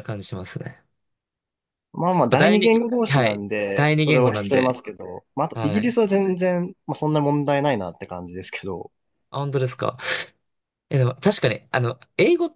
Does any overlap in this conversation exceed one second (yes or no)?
yes